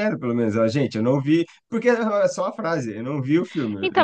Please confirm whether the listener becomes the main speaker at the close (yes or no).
yes